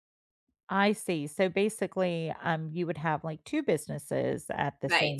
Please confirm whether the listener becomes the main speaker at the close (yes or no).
yes